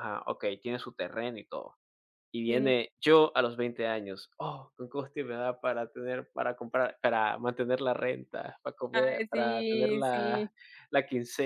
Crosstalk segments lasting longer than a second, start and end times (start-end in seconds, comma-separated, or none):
8.9-10.5